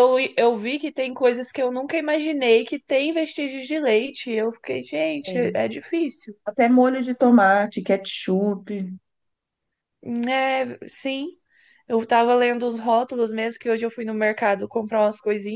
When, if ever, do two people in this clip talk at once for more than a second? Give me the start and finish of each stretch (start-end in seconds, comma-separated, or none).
none